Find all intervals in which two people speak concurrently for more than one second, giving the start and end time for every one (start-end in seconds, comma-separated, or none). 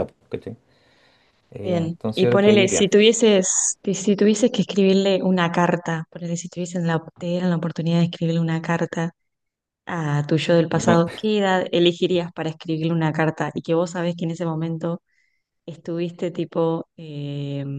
1.6-2.9